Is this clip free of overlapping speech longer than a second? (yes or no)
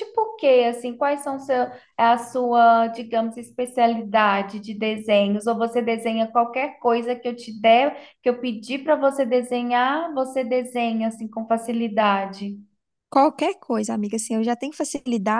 yes